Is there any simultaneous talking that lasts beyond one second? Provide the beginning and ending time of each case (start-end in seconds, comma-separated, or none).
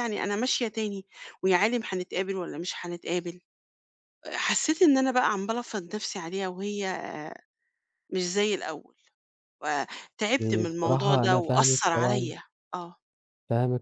10.4-12.3